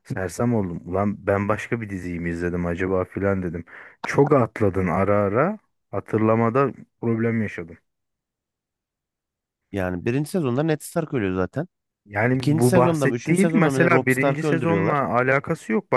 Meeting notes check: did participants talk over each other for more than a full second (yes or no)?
yes